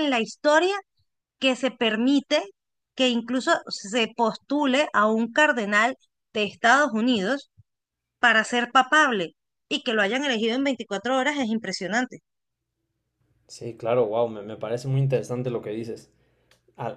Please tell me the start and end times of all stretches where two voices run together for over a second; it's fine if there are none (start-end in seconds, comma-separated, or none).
none